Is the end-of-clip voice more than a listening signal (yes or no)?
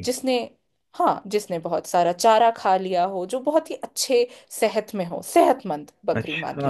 yes